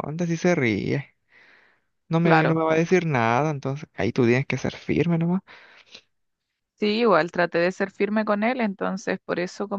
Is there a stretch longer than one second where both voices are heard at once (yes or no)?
no